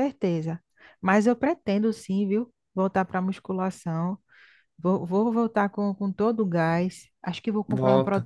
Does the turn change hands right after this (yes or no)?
no